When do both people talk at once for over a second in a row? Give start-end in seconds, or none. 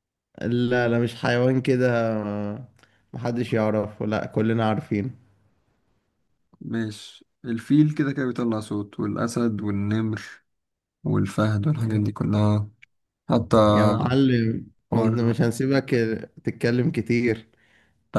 none